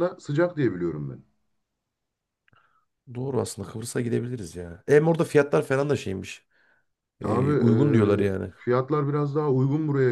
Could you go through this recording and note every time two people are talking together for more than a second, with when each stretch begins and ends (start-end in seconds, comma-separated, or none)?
7.2-8.5